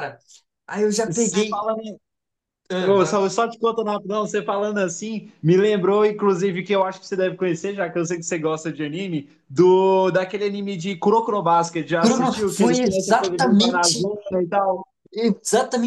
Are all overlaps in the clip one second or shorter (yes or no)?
no